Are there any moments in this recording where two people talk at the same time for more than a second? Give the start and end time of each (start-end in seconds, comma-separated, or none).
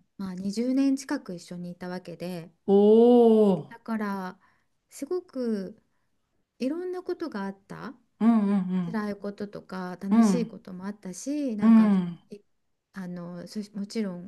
none